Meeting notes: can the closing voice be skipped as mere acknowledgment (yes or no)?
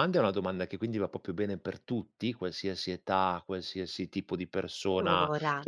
yes